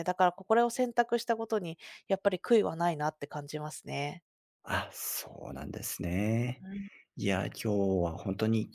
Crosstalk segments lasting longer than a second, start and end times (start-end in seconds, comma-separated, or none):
none